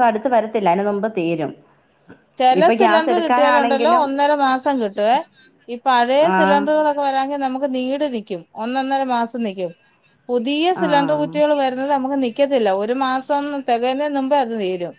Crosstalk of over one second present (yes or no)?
yes